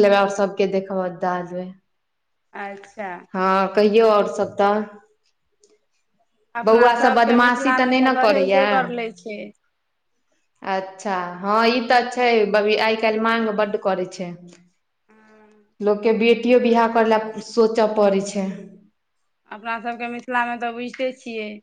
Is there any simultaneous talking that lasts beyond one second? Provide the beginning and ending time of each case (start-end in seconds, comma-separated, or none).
6.7-8.7